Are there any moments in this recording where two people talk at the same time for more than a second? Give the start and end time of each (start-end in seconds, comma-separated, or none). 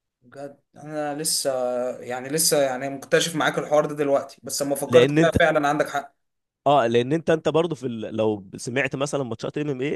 none